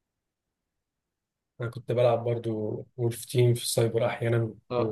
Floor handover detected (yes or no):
yes